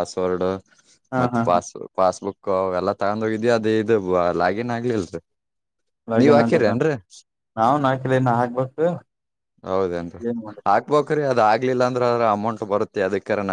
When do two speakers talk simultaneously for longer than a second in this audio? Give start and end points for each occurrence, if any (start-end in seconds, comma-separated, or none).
none